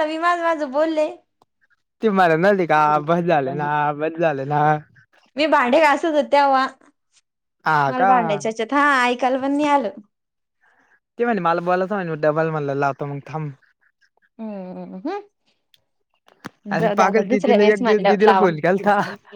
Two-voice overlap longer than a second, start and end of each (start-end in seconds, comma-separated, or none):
16.8-18.5